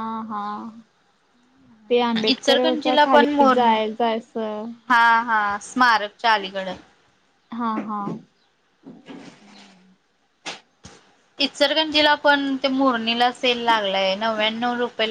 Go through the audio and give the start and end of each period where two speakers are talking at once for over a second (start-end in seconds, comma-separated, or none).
2.3-3.8